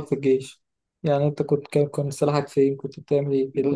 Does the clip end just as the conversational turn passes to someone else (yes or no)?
yes